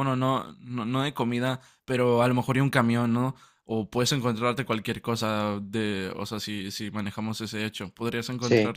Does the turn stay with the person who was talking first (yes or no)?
yes